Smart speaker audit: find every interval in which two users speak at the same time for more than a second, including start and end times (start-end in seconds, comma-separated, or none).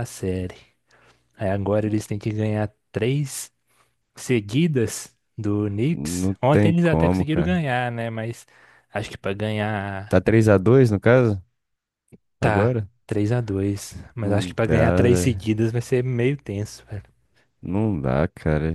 5.9-7.6, 14.2-15.5